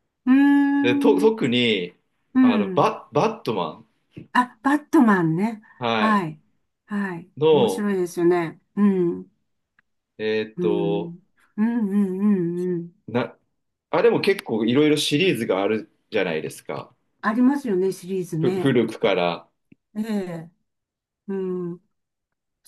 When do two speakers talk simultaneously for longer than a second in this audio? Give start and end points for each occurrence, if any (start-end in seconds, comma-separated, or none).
none